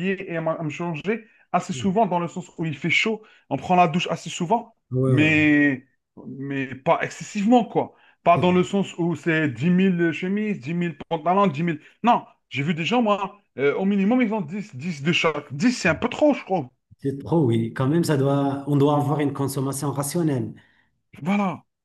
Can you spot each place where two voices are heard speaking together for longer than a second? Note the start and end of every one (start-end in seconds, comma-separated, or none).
none